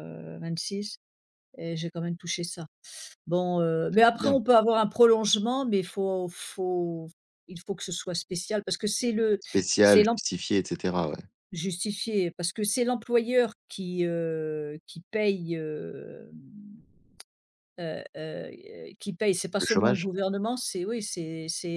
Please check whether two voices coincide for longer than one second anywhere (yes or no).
no